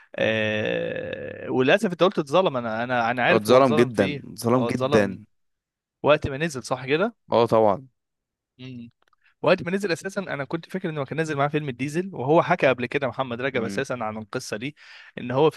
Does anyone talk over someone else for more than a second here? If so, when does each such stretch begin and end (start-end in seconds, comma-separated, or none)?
3.3-5.2